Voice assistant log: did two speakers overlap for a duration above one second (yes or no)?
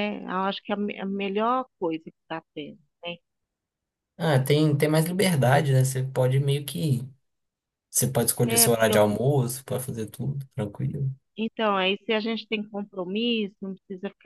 no